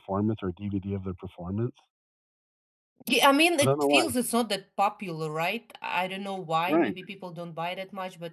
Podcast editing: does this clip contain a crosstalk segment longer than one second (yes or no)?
no